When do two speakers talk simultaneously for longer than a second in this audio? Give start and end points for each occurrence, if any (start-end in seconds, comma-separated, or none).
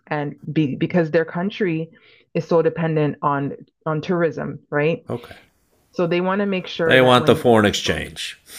6.8-8.1